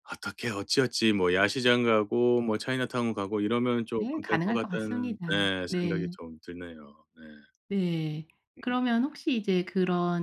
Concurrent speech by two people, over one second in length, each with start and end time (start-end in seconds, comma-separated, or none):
4.0-5.9